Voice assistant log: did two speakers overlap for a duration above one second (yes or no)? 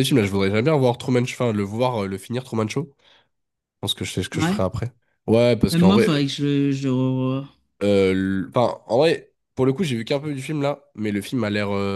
no